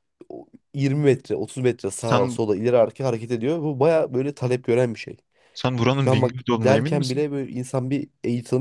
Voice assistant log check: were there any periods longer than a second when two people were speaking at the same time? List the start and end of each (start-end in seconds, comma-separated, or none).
6.0-7.2